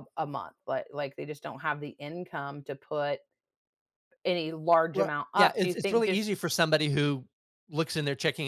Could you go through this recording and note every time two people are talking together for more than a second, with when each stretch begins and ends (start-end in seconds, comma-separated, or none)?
4.9-6.3